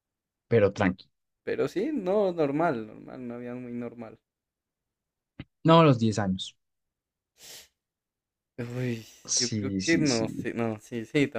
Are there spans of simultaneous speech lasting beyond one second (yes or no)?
yes